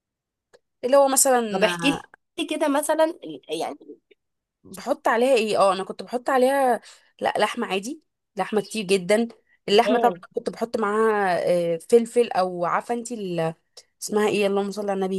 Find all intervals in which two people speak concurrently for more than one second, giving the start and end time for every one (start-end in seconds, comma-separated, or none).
none